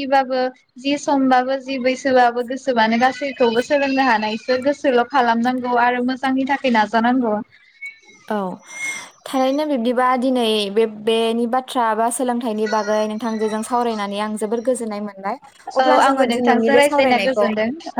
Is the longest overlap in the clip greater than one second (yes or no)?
yes